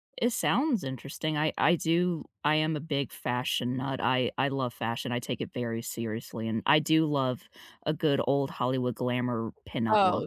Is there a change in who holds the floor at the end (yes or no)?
yes